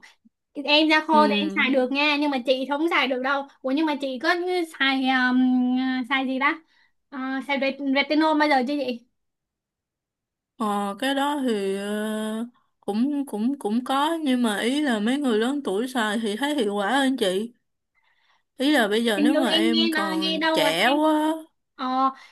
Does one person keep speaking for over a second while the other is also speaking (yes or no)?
yes